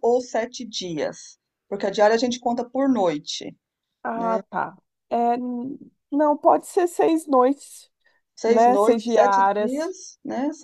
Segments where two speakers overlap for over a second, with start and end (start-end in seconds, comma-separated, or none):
8.4-9.9